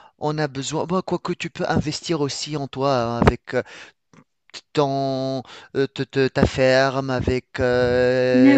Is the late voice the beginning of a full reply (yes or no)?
no